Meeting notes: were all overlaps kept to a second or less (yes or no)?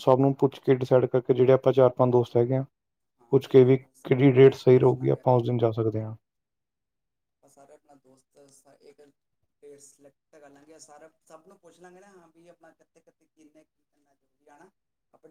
no